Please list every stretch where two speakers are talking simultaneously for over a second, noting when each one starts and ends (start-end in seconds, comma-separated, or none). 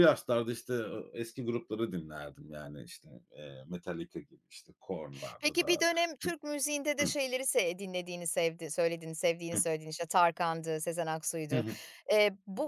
none